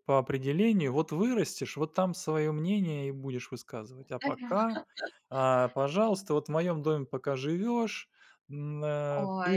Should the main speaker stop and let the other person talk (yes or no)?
no